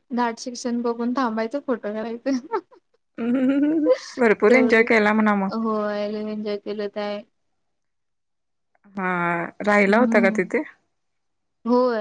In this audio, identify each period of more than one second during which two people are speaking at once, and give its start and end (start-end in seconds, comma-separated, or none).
none